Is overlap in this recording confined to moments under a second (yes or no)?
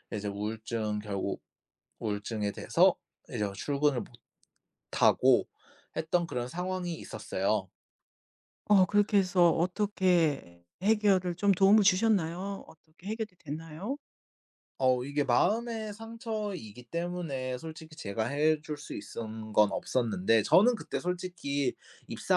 yes